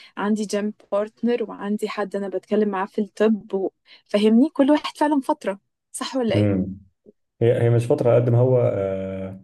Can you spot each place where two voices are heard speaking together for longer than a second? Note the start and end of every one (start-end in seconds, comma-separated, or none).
none